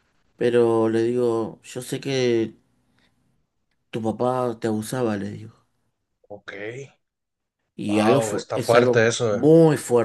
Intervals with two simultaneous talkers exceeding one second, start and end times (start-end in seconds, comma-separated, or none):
7.9-9.4